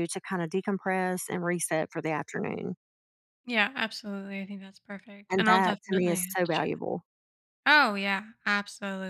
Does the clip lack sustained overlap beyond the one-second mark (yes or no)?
no